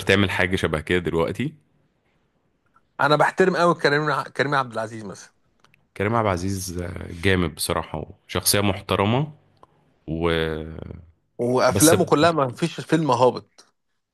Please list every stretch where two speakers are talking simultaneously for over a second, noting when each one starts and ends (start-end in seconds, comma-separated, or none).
none